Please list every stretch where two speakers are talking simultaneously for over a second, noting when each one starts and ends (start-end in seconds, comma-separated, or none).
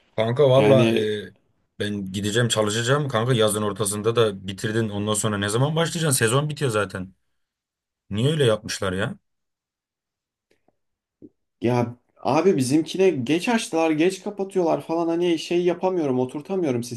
none